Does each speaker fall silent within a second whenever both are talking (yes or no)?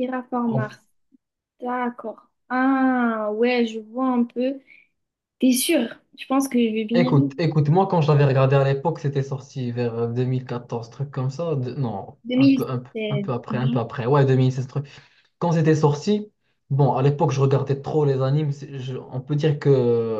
no